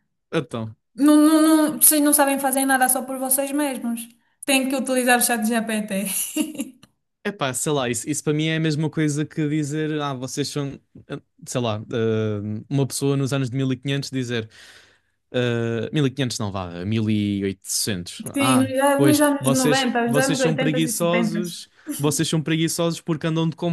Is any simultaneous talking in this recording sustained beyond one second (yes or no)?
yes